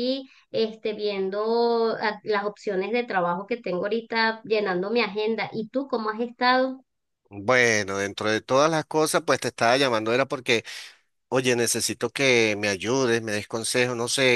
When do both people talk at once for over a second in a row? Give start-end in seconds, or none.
none